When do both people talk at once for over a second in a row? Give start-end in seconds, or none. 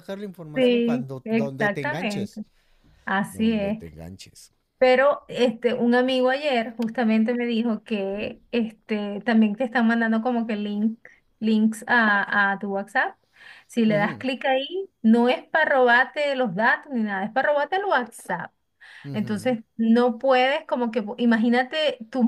0.5-2.4